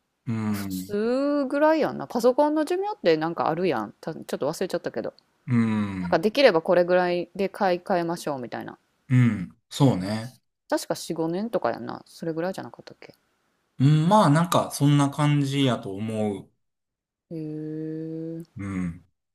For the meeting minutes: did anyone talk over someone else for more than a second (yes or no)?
no